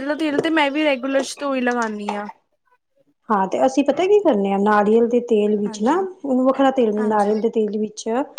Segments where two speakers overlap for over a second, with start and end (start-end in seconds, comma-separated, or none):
none